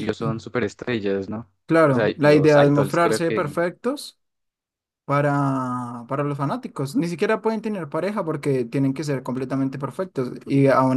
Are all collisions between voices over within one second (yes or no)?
no